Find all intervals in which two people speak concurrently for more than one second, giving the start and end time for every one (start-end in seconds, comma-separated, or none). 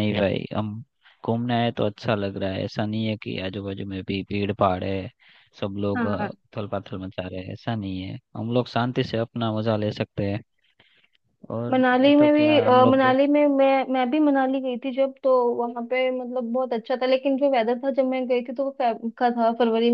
11.7-13.2